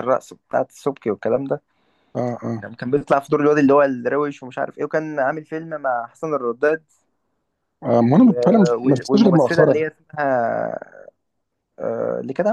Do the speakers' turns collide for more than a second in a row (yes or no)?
yes